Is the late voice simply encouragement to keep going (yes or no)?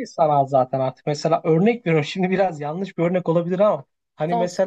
yes